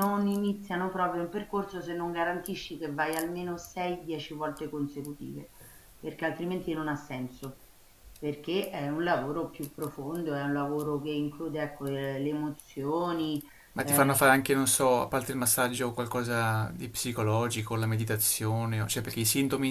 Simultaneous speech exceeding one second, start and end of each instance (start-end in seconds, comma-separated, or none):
none